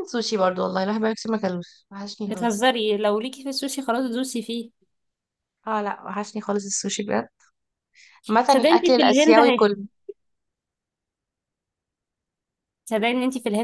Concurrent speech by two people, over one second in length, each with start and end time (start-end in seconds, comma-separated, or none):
8.4-9.8